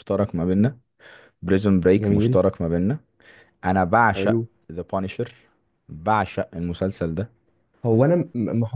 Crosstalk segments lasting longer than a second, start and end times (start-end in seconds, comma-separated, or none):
none